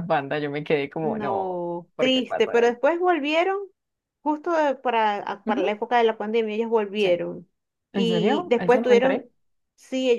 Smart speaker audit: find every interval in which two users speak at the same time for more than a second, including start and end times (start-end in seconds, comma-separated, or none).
1.0-2.8, 7.9-9.2